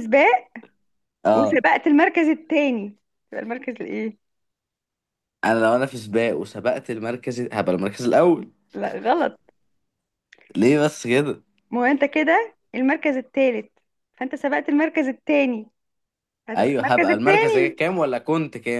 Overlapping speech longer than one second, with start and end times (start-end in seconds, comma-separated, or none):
16.6-17.8